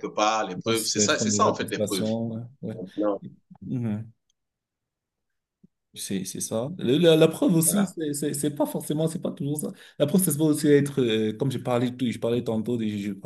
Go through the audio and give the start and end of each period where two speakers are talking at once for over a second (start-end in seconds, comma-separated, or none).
0.5-2.1